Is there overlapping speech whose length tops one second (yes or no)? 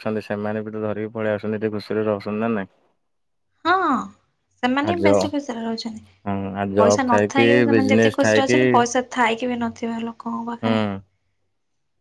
yes